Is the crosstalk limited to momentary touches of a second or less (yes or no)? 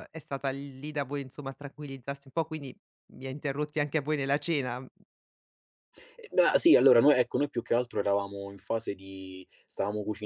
yes